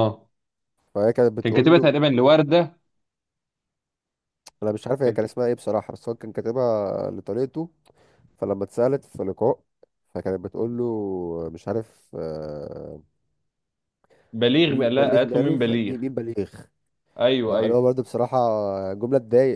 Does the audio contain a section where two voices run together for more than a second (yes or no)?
yes